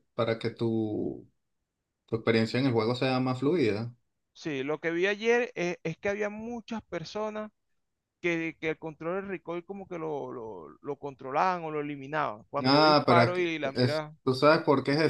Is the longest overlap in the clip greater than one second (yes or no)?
yes